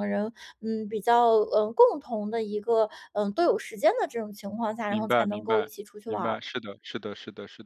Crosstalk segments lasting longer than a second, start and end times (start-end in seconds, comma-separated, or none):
4.9-6.4